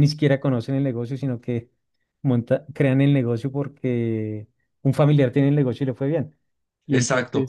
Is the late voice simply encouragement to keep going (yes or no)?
yes